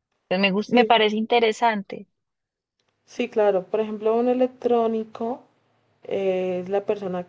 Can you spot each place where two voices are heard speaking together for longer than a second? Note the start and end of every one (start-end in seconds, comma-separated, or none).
none